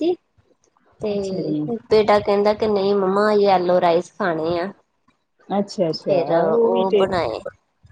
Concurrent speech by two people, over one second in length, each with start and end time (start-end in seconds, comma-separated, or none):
none